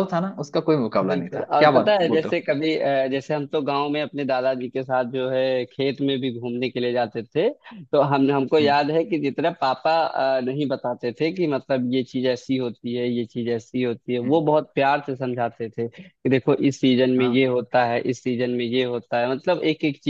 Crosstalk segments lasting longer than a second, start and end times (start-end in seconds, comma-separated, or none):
1.0-2.4